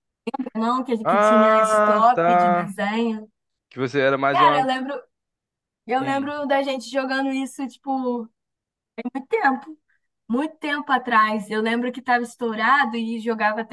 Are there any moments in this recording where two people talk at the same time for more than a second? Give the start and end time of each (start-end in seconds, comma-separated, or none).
1.0-2.7